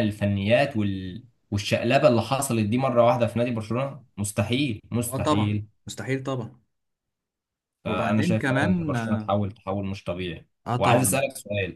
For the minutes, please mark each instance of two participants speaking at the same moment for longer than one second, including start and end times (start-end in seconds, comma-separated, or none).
7.8-9.3